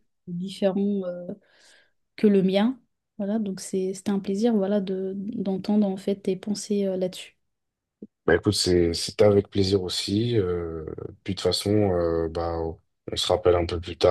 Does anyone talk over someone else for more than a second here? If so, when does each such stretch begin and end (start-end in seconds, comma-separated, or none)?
none